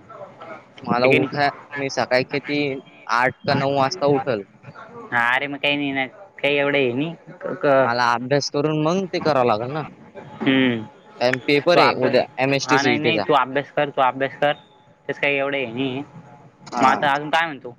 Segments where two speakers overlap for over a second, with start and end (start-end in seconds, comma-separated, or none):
11.2-13.2